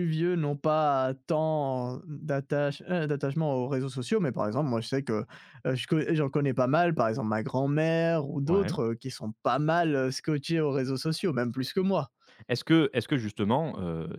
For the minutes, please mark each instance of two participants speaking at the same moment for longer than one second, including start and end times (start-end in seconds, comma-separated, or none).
none